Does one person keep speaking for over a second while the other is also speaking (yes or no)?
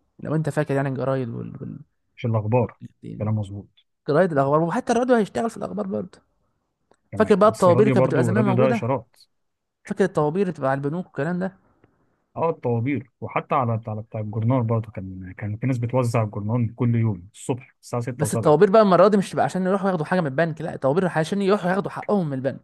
yes